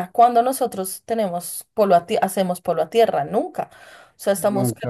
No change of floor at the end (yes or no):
yes